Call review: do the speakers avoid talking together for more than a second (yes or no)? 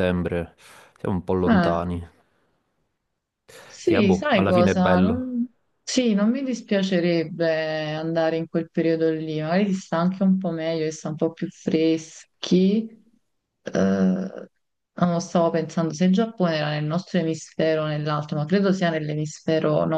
no